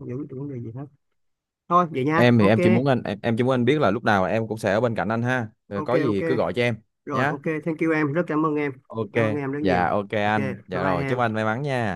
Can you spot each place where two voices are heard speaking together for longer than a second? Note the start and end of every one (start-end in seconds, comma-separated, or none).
9.6-11.2